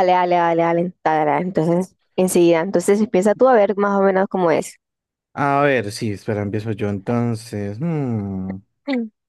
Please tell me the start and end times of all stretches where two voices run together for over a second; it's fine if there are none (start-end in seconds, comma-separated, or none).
none